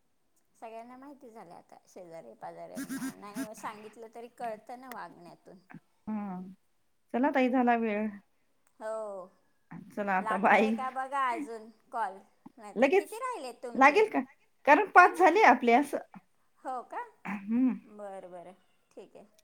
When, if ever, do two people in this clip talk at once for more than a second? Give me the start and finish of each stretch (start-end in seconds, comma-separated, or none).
none